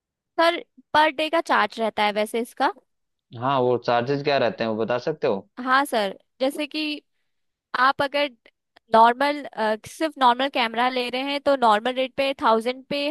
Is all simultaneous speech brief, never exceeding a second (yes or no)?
yes